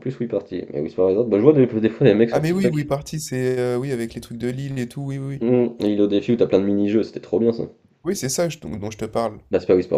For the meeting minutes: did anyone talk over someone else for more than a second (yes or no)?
no